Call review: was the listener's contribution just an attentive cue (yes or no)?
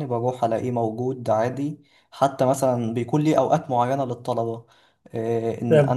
yes